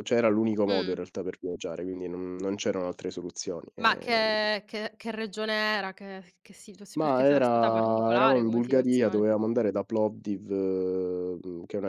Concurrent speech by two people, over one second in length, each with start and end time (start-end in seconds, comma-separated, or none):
7.0-9.3